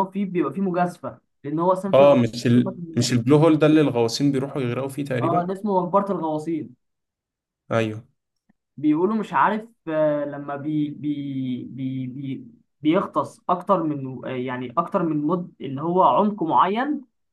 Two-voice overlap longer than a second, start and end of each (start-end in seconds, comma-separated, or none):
none